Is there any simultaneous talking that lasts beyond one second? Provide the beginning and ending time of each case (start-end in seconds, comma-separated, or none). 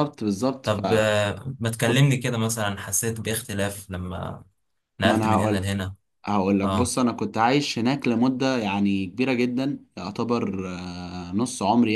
none